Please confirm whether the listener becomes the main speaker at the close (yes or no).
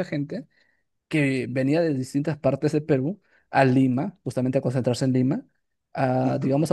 no